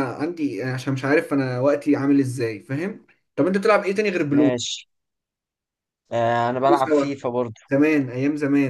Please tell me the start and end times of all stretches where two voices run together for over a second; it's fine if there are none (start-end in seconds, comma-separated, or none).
none